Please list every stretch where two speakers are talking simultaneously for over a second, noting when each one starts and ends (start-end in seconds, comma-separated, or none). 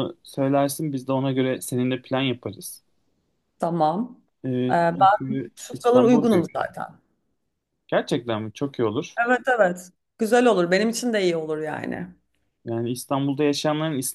4.7-6.6